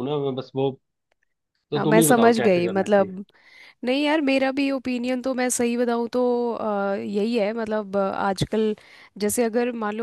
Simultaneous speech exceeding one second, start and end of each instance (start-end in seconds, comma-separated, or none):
1.7-3.2